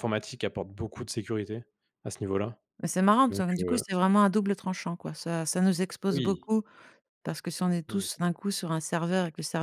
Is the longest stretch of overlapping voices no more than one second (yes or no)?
yes